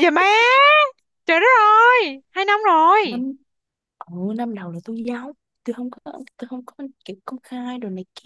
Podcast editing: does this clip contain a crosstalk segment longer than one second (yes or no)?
no